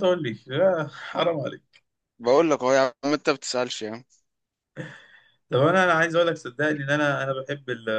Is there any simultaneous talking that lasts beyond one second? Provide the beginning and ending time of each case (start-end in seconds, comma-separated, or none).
none